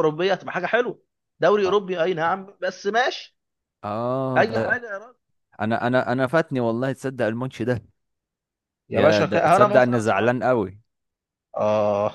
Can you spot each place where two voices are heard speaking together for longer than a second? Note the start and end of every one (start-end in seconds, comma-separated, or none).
8.9-10.6